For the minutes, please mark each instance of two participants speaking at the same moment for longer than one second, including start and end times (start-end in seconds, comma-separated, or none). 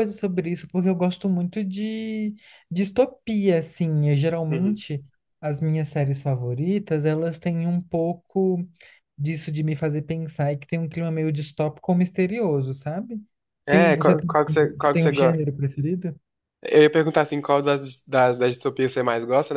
13.7-15.1